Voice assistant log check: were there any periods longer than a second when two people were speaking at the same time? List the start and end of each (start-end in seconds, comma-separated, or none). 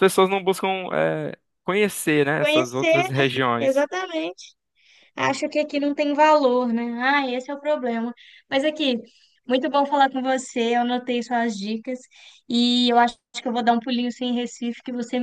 2.4-3.9